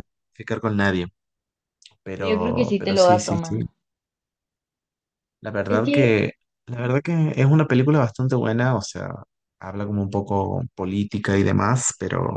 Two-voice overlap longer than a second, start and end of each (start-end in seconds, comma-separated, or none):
2.1-3.6